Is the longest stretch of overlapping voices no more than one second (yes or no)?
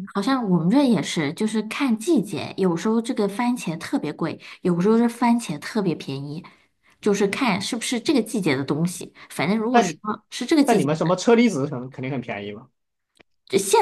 yes